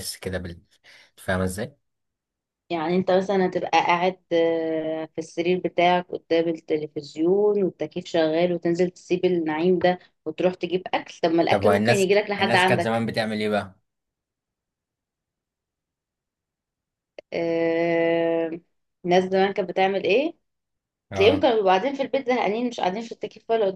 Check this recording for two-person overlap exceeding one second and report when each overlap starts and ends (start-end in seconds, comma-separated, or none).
11.5-13.0